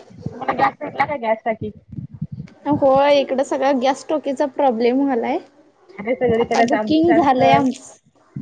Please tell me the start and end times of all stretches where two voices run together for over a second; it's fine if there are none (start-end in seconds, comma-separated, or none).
6.4-7.6